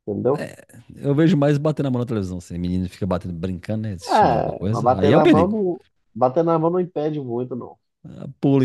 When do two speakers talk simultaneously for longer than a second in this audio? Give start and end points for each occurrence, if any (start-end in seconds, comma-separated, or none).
4.1-5.6